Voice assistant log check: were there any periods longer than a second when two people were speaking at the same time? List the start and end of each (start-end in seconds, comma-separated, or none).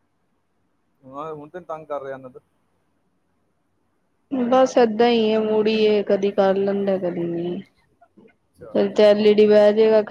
none